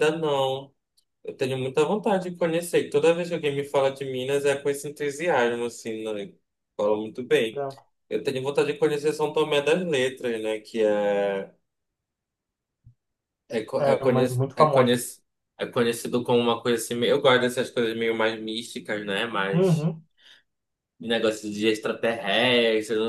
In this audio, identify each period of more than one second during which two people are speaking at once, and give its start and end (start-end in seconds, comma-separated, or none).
13.8-15.0